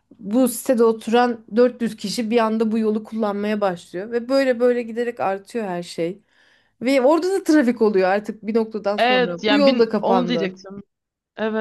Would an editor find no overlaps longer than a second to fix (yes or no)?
no